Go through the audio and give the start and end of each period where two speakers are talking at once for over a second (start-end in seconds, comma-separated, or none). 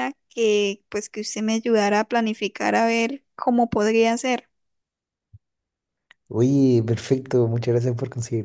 none